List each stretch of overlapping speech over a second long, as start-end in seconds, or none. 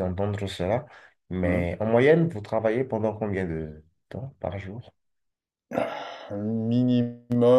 none